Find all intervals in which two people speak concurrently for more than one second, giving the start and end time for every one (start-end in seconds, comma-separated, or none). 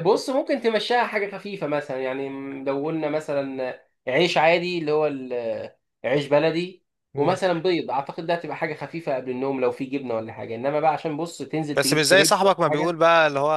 11.7-13.0